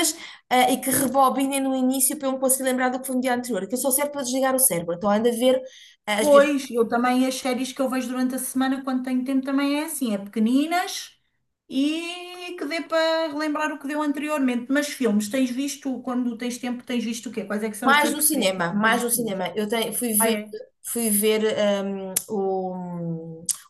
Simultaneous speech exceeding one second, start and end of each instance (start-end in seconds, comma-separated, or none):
17.9-19.4